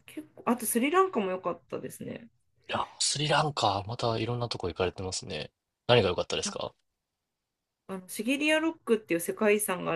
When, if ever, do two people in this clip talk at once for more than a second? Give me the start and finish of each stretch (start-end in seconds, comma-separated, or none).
none